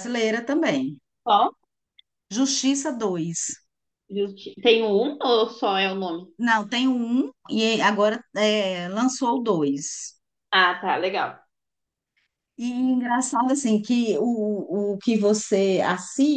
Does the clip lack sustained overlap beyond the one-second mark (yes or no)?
yes